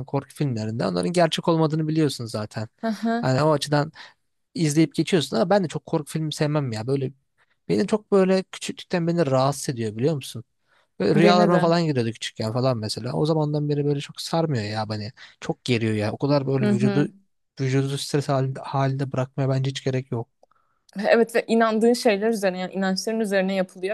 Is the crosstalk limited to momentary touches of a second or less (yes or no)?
yes